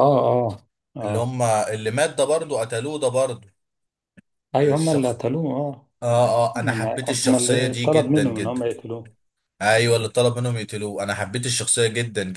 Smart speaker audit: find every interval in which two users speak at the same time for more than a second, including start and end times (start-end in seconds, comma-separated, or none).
6.5-8.7